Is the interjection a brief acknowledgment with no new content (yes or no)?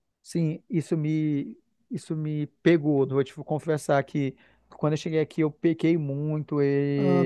no